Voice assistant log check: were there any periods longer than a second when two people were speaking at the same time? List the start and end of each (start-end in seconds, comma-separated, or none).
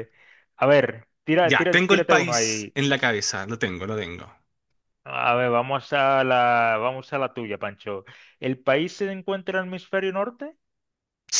1.4-2.8